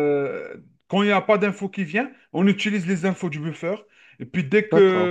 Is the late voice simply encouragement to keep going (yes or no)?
yes